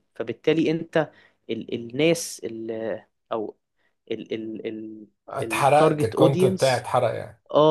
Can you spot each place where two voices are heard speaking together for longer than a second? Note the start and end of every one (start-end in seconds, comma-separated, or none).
5.4-6.9